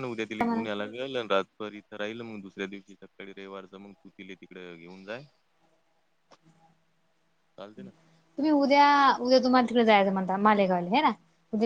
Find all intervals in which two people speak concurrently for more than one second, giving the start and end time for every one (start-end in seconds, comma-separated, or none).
none